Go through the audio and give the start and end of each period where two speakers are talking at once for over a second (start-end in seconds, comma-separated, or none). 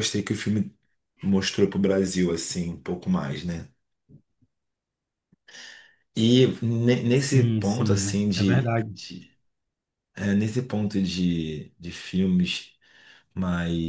7.1-8.9